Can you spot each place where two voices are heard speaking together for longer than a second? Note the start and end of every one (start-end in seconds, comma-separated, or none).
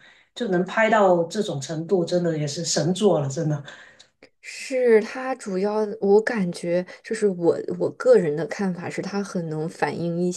none